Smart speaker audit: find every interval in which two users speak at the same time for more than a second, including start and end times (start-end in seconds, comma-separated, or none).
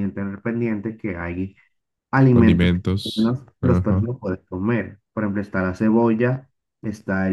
2.3-4.1